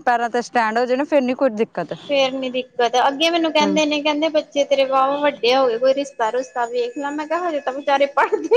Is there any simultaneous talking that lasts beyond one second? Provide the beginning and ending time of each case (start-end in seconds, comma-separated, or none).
none